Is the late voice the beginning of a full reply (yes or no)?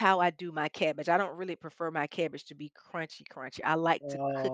yes